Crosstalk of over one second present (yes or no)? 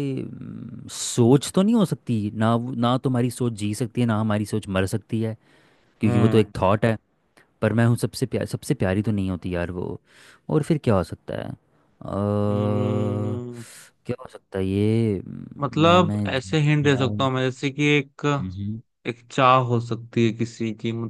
yes